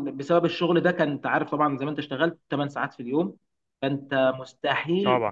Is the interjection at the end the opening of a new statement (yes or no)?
no